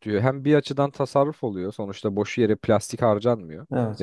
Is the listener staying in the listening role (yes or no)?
yes